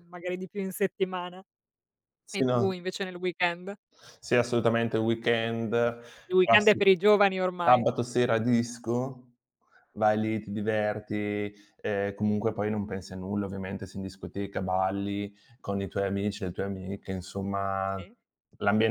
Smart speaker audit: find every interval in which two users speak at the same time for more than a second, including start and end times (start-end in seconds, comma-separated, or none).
none